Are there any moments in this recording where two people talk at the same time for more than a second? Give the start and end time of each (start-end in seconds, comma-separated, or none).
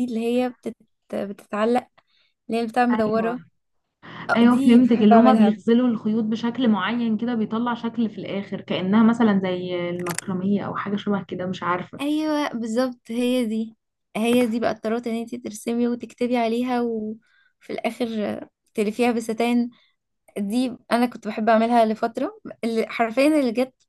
4.4-5.6